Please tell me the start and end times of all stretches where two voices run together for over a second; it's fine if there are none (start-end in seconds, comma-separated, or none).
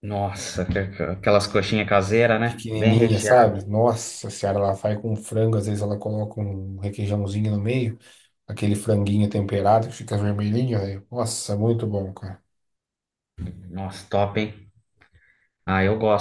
2.4-3.7